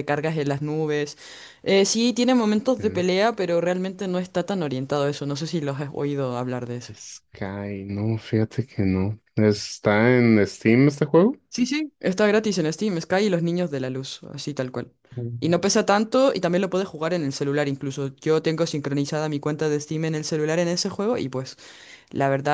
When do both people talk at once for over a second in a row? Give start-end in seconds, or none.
none